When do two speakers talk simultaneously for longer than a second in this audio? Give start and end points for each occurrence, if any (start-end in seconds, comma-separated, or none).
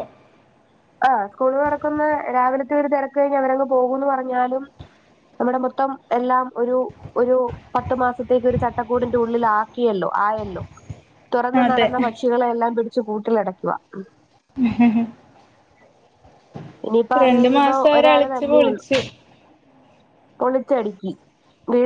17.2-18.8